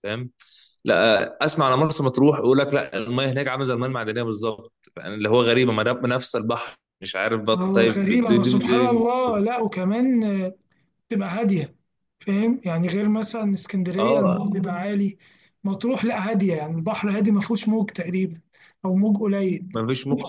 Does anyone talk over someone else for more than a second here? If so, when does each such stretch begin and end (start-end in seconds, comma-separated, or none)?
7.5-9.0